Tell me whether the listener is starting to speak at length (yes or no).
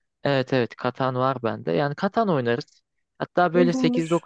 no